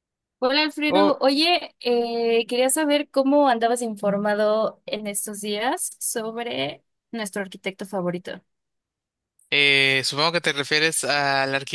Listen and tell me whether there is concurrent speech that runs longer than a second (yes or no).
no